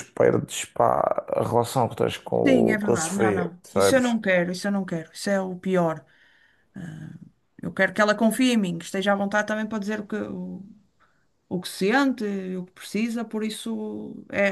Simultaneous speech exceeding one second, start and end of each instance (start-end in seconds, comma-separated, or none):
2.4-4.2